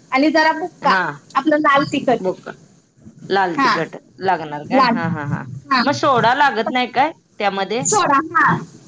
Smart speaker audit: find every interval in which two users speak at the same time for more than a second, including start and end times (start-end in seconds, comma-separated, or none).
none